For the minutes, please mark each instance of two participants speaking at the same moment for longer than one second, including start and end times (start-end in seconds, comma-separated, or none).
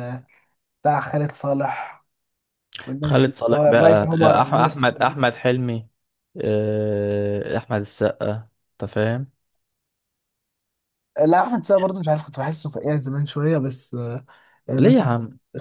3.0-4.8